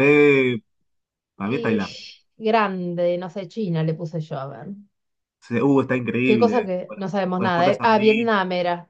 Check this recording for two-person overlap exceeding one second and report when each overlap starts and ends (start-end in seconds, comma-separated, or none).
6.2-8.3